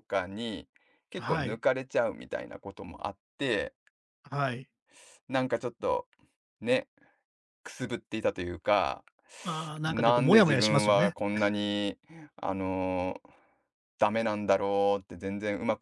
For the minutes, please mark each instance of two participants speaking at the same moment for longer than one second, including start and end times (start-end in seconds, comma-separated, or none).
9.8-11.1